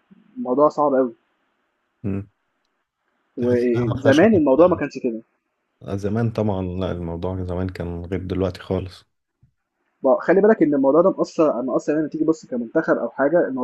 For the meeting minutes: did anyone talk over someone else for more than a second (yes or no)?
yes